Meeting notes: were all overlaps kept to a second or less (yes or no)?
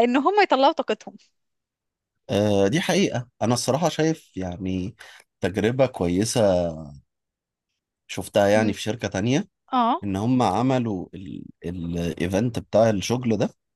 yes